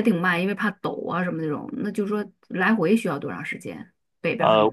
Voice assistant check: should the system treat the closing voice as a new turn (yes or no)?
yes